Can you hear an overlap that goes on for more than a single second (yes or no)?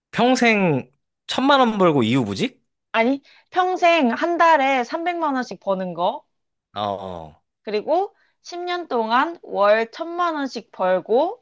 no